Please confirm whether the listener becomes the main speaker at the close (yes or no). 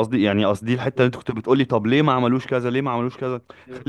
yes